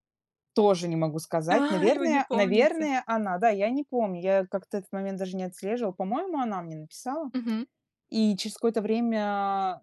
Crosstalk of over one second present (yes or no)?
yes